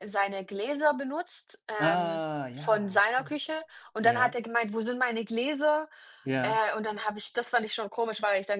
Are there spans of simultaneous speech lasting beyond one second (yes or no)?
yes